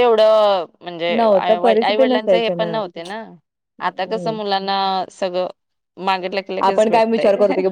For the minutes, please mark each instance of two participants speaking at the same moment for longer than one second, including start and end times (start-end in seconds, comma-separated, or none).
1.2-2.5